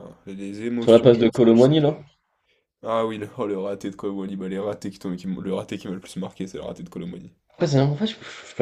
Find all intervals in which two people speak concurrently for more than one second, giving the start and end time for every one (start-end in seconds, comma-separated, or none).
0.8-2.0